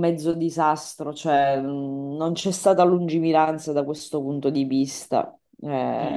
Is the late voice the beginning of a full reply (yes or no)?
yes